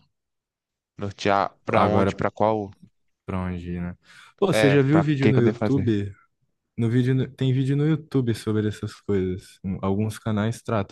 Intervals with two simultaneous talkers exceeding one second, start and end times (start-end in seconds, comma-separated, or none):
4.5-5.9